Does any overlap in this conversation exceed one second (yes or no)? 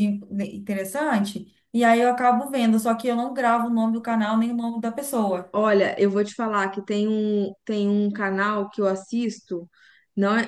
no